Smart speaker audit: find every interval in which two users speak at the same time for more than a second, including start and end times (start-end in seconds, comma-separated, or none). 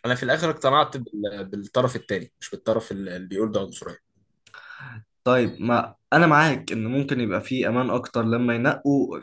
none